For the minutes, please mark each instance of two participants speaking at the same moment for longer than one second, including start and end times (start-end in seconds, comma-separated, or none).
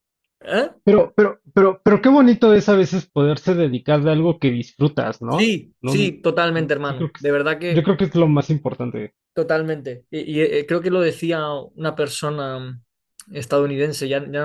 5.3-7.9